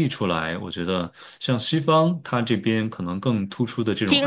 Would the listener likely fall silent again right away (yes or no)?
no